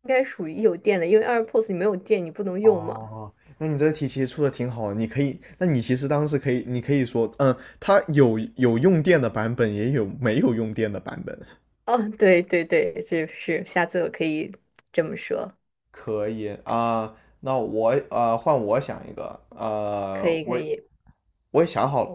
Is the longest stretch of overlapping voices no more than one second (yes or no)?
yes